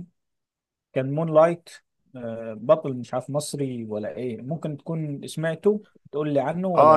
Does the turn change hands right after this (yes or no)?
yes